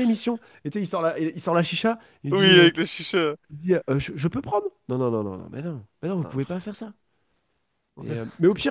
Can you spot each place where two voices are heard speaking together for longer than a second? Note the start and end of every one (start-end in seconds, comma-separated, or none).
none